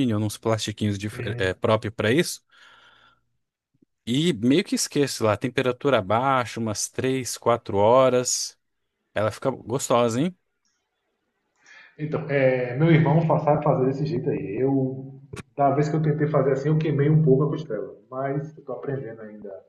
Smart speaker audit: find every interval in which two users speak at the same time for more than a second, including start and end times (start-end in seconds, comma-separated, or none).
none